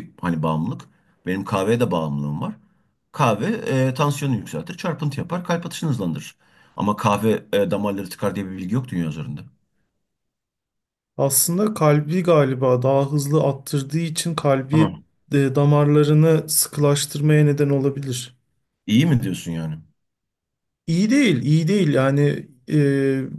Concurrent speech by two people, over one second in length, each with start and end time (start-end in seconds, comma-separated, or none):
none